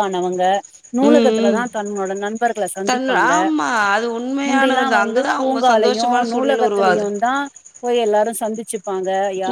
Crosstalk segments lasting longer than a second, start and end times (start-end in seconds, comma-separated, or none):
4.5-7.1